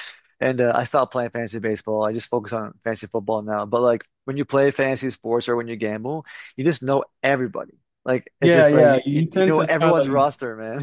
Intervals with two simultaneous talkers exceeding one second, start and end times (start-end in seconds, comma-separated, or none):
8.4-10.3